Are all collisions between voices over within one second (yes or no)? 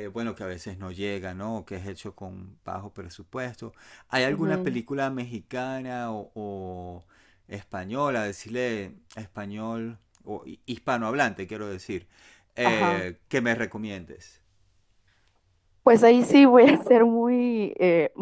yes